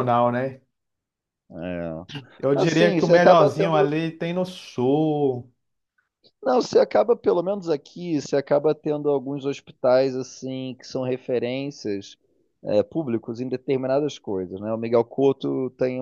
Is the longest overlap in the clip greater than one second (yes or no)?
yes